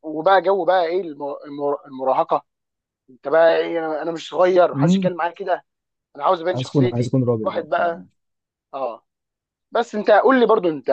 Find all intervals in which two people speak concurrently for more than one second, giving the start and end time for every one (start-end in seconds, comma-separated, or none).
6.5-8.0